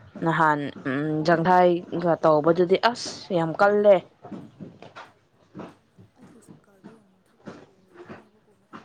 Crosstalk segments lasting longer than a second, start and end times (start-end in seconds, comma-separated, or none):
none